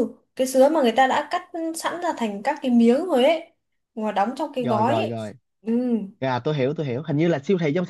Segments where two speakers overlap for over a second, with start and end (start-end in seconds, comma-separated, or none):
none